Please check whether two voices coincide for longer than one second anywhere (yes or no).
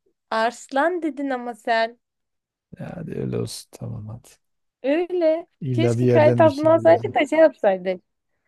yes